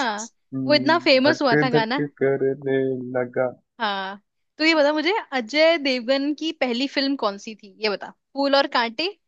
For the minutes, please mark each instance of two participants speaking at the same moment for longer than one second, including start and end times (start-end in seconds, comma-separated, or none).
0.7-2.0